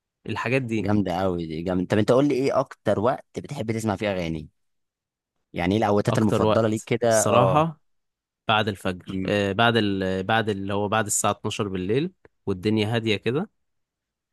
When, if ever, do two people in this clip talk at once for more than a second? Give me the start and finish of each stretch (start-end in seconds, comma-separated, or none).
6.1-7.7